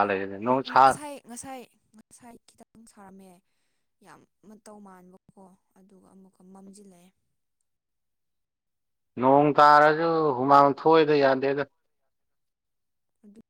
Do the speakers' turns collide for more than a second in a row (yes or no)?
no